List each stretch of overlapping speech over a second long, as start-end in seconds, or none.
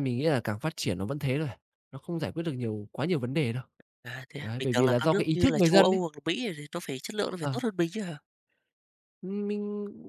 4.4-6.0